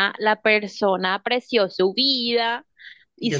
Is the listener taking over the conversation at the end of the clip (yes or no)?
no